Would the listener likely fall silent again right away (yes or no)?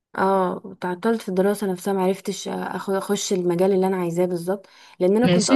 yes